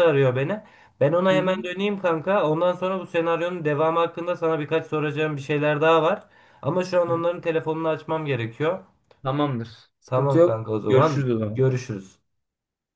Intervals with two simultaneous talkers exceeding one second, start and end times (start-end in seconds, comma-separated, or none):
10.1-11.6